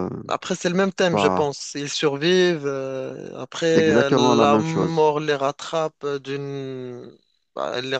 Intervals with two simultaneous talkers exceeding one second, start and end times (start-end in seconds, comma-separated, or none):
3.6-5.1